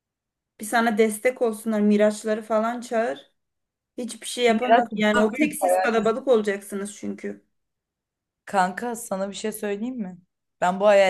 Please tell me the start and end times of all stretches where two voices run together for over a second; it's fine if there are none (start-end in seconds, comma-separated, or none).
4.5-5.9